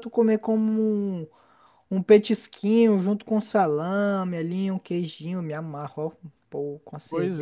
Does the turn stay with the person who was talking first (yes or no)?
no